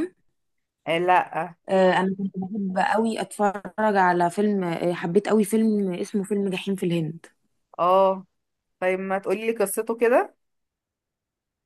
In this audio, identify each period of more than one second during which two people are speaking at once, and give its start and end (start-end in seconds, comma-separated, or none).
none